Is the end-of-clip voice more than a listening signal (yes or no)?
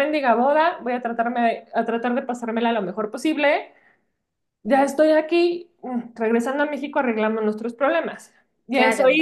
no